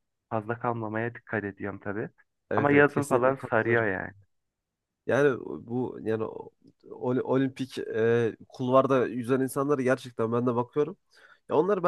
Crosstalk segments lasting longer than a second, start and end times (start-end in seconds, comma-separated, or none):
2.5-3.9